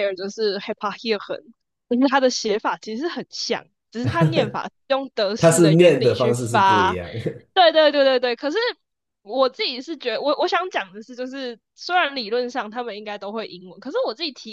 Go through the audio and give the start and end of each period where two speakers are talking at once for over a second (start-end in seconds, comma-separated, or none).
5.4-7.0